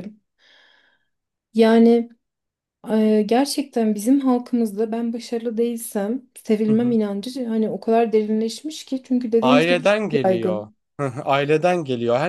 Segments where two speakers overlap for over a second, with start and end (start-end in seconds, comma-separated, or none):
9.4-10.8